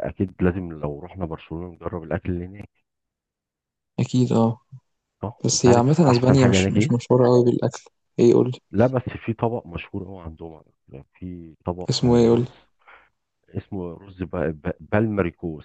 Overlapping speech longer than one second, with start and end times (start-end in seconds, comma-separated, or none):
5.5-7.1